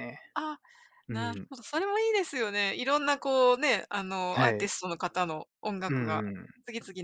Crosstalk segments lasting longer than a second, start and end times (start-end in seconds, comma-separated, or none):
none